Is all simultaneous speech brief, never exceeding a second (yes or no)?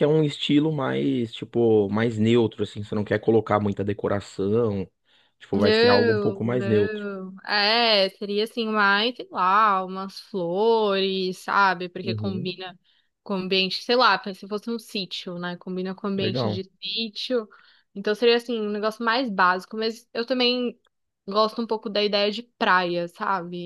no